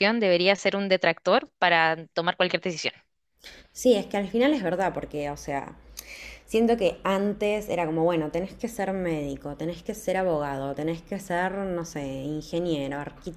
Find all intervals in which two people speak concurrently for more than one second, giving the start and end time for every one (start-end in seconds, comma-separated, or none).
none